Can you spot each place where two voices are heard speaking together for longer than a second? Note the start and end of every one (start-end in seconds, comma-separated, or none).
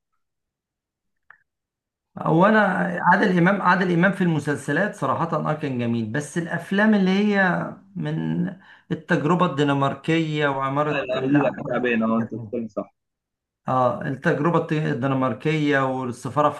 10.9-12.5